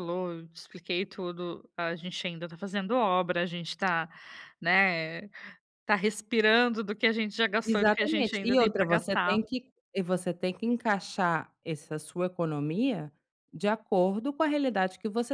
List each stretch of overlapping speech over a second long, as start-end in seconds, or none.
7.6-9.4